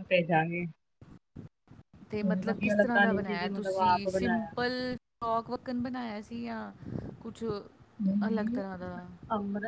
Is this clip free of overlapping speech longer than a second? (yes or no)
no